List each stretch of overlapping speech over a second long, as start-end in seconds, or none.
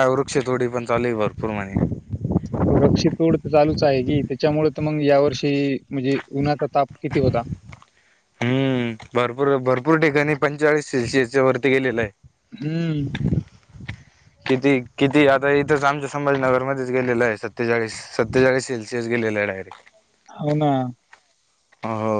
none